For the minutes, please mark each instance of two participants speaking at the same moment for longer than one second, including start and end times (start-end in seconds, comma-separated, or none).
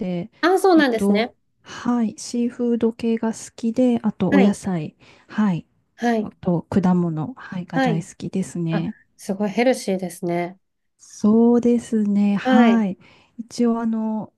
none